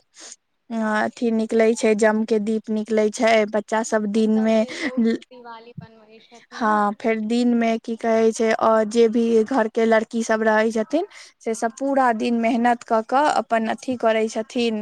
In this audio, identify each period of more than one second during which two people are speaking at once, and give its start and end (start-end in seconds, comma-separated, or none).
none